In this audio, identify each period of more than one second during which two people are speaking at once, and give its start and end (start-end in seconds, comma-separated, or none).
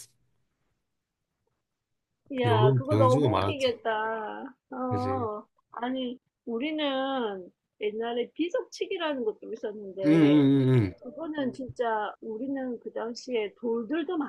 2.5-3.7